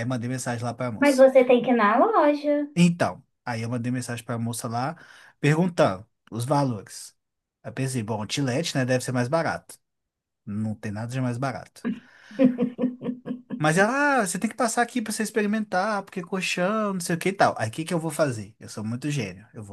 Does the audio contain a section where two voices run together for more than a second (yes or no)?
no